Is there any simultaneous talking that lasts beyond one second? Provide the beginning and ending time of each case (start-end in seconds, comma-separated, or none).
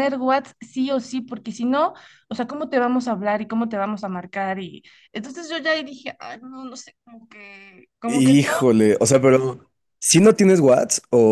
none